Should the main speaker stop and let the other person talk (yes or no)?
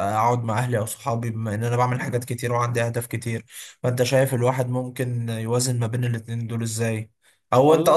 no